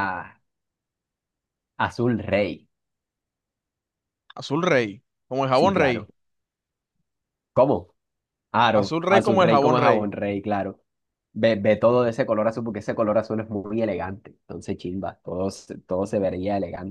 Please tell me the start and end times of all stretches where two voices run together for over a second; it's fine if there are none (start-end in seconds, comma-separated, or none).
8.7-10.1